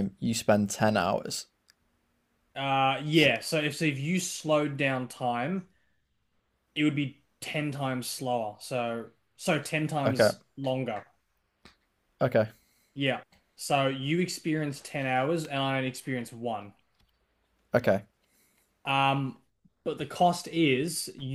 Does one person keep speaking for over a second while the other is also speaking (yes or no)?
no